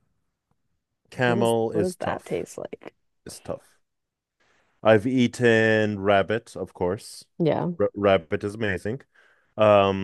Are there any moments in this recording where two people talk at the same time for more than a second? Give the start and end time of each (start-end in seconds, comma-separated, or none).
1.2-2.5